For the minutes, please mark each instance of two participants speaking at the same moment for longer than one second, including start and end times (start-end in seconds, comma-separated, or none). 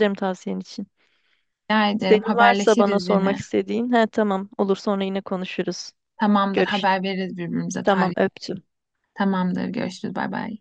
2.1-3.4